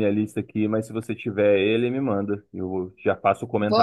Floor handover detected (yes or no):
yes